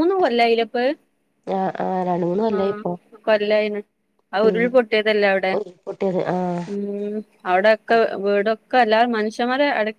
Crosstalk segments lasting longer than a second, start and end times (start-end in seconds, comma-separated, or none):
none